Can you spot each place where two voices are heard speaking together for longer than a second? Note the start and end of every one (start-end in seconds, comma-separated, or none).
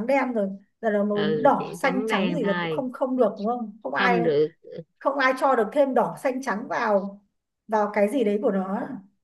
1.1-2.8